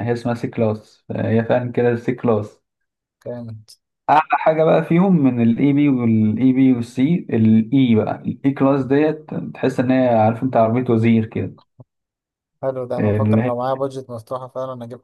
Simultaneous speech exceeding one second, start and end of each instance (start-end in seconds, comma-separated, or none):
none